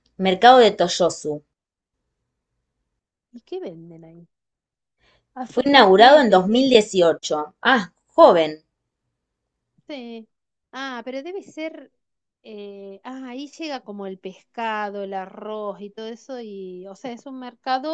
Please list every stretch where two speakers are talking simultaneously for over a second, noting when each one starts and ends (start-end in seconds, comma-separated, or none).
5.4-6.9